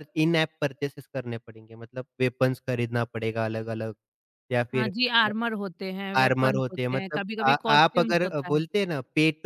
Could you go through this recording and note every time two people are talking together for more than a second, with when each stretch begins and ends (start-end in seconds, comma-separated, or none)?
6.2-8.6